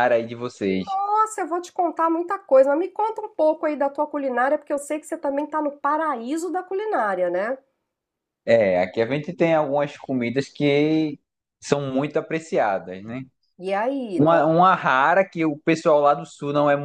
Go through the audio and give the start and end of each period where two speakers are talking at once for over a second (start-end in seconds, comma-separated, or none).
none